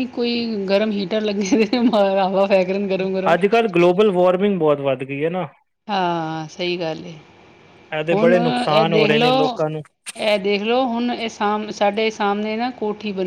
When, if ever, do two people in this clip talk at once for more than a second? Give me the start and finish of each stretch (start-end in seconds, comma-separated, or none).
8.1-9.6